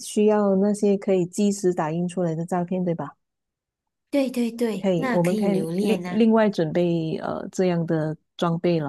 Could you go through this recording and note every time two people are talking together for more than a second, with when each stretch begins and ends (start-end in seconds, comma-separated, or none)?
4.8-6.2